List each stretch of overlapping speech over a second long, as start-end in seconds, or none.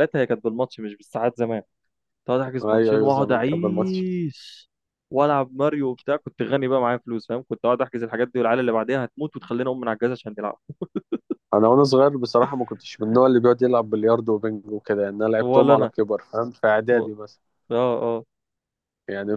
2.6-4.0